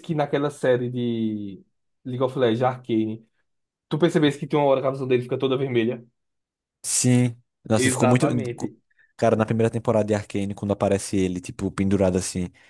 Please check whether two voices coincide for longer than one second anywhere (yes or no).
no